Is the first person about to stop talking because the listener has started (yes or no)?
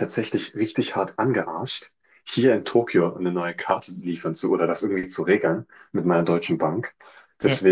no